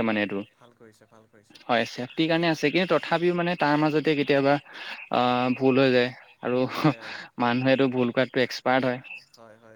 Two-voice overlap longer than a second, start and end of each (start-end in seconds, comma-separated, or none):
none